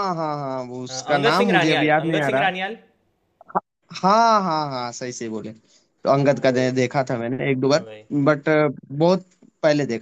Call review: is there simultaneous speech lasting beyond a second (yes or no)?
yes